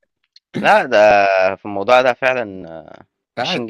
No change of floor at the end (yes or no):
no